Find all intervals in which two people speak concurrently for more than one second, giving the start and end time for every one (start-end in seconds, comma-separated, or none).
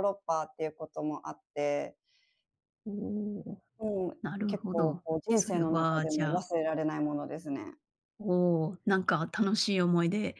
4.2-6.4